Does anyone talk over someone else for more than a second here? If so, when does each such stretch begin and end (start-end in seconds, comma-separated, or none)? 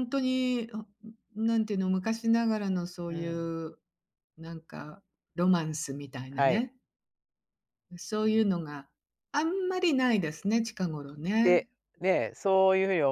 none